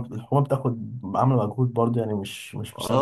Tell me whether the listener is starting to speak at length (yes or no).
yes